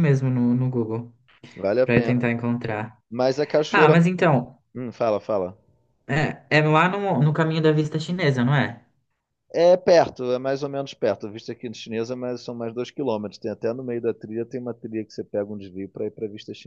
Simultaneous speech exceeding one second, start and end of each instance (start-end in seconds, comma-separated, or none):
none